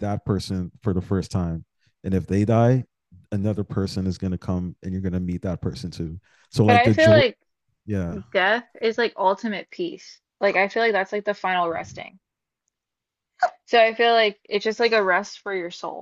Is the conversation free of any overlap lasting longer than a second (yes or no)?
yes